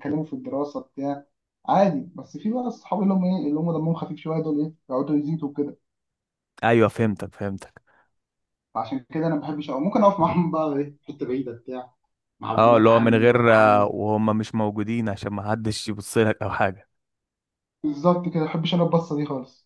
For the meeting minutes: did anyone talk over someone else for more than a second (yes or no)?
yes